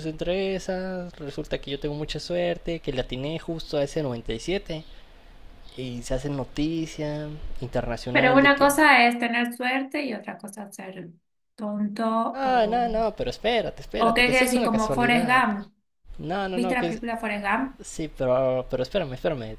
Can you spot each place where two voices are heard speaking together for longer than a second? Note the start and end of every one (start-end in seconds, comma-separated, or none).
14.0-15.4